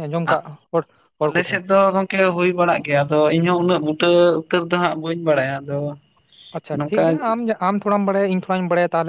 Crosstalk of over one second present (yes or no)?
no